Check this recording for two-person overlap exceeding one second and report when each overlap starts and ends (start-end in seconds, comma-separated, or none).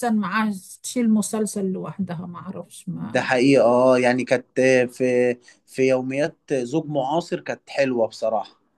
none